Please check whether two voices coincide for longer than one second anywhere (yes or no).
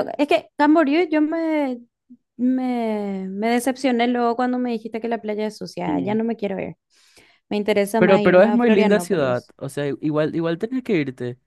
yes